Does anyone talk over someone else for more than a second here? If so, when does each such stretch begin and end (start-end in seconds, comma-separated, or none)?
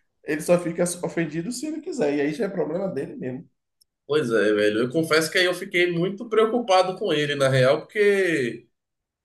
none